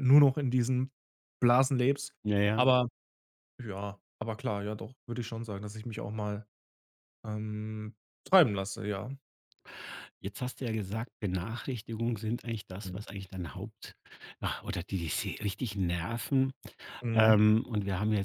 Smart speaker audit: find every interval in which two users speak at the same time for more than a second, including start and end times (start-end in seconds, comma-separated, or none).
none